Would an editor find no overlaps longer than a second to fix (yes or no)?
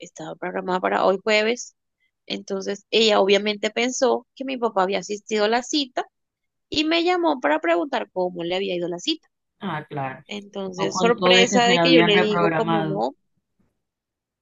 no